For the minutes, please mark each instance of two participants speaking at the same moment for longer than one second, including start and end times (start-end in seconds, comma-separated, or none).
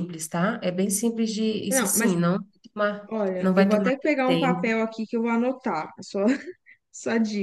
3.1-4.7